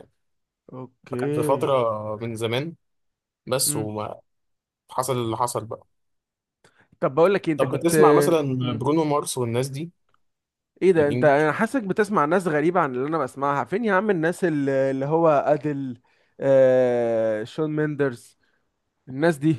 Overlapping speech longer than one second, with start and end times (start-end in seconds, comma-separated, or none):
none